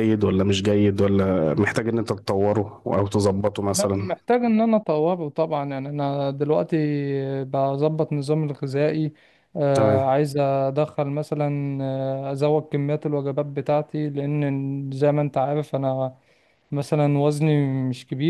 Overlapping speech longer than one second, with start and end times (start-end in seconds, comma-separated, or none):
none